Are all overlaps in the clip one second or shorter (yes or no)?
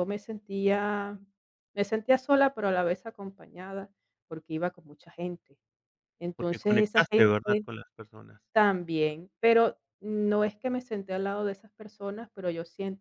no